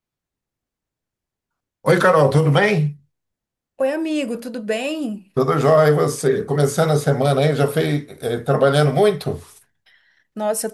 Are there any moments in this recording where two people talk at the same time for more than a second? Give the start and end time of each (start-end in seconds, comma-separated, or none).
none